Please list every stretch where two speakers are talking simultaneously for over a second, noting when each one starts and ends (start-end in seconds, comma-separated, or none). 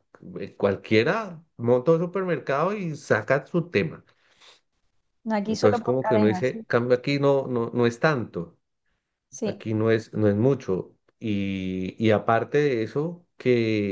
5.5-6.7